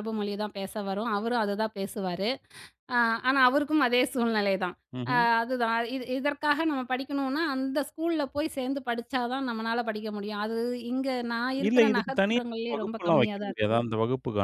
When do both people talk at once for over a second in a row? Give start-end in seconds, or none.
11.7-13.8